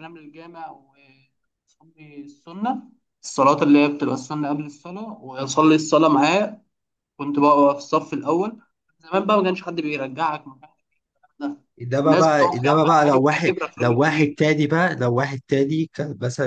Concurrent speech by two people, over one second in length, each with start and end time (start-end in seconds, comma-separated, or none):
11.9-14.4